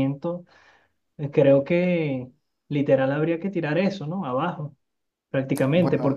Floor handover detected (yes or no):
no